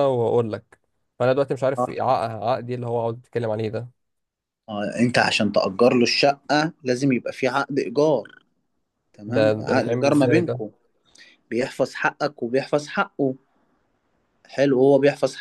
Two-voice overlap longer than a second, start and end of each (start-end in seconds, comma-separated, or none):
9.3-10.6